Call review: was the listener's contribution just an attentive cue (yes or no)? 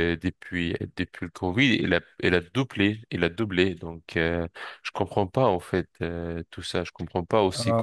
yes